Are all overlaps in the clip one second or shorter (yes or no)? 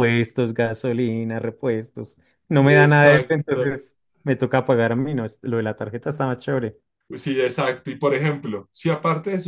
no